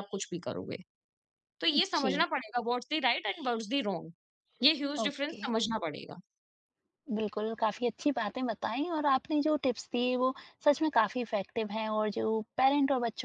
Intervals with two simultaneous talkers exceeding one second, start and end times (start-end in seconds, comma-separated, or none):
none